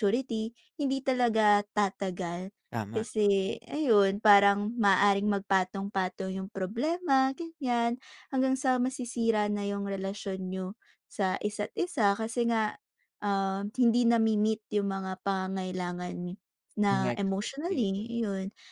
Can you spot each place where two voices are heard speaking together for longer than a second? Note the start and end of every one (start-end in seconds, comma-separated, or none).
16.9-18.2